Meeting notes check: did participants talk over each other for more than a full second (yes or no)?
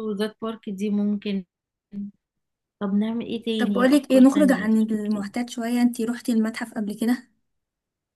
yes